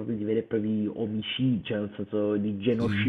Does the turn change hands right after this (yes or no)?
no